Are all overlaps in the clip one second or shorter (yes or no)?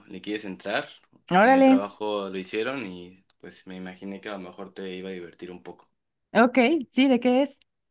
yes